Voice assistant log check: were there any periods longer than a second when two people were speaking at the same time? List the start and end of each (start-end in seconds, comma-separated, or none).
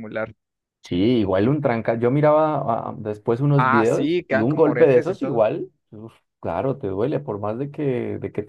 3.6-5.5